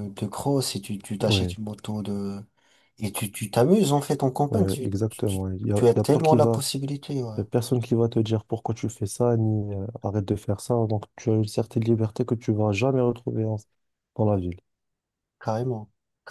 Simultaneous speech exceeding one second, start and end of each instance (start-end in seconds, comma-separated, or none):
4.5-6.6